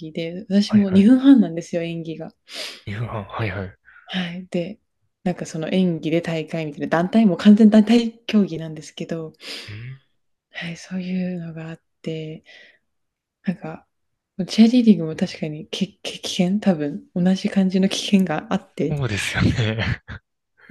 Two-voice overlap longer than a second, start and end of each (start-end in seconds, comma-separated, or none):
none